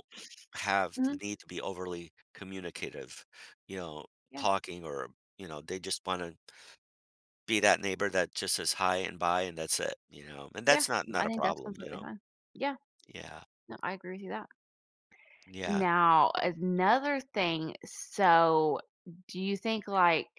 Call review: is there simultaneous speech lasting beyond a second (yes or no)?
yes